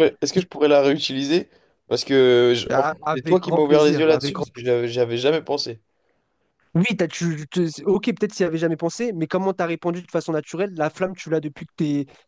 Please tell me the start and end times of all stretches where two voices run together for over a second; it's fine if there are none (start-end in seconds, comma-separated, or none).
2.7-4.5